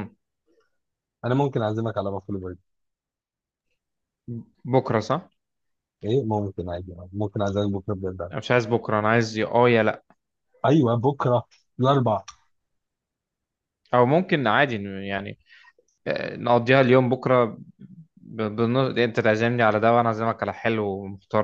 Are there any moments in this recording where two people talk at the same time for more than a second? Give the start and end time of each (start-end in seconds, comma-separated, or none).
none